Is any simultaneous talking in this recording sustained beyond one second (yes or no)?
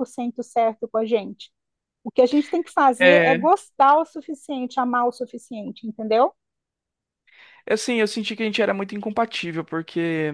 no